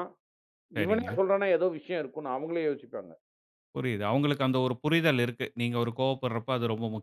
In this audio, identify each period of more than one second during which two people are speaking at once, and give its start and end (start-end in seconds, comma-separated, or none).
none